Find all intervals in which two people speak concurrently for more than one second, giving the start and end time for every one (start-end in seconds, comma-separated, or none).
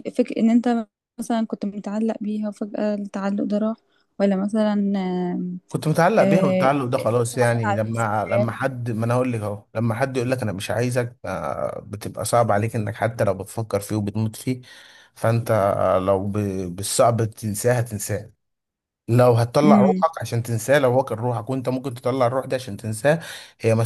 6.2-8.5